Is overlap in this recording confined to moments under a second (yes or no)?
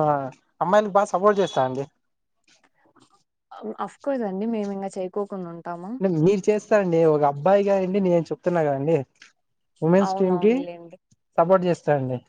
yes